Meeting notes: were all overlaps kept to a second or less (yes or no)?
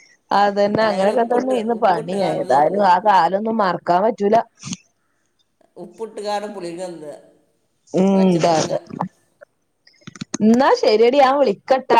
no